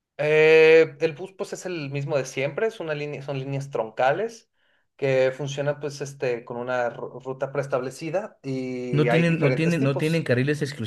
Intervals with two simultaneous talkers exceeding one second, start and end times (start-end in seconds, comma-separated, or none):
8.9-10.3